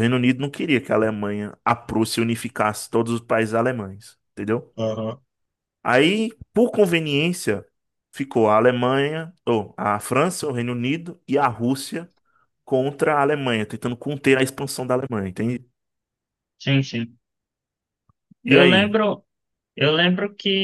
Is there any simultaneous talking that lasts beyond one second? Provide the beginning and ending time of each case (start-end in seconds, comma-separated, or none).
none